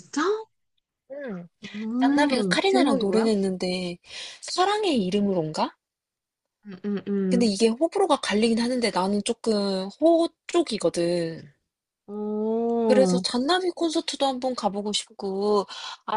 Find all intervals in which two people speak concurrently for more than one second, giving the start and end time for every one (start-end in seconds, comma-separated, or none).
2.0-3.3